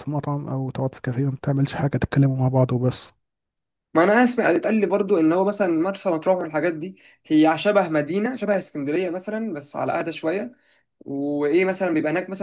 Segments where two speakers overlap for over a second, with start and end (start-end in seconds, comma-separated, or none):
none